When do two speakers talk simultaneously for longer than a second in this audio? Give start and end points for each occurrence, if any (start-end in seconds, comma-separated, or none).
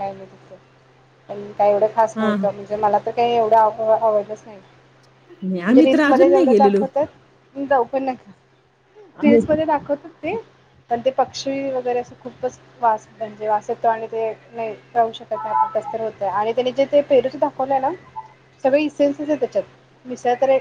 none